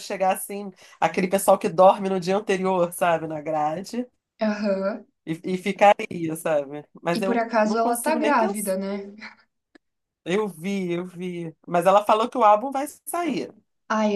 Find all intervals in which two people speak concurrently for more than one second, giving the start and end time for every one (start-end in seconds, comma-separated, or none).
7.2-8.8